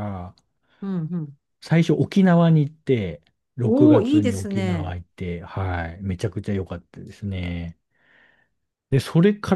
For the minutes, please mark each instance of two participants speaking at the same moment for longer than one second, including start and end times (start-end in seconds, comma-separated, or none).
3.6-5.0